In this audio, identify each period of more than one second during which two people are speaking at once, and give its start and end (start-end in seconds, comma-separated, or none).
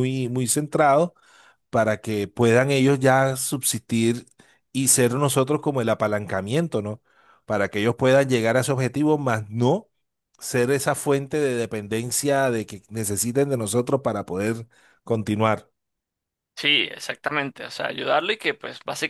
none